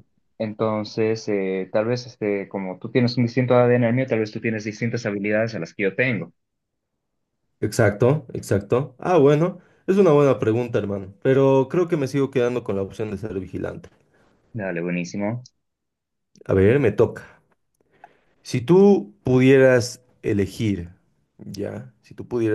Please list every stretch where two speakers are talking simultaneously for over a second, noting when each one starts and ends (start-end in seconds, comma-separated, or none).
none